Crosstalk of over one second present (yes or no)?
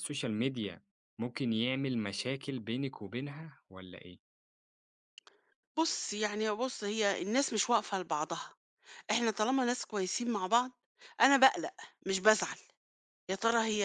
no